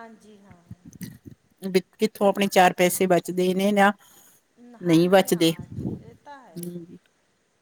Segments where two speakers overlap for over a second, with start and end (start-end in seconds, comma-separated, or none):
5.3-6.8